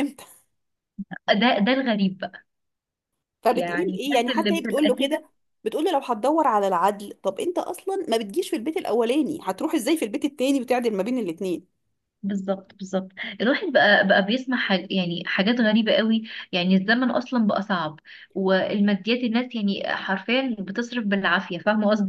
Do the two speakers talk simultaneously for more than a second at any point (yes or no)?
yes